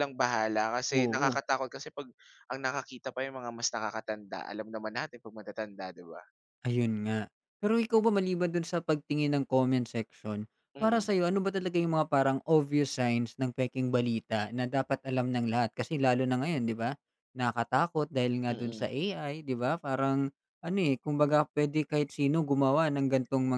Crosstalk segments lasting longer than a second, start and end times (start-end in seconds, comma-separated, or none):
none